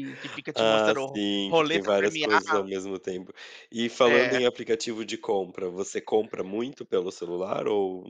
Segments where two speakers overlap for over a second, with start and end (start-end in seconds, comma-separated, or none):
0.6-2.6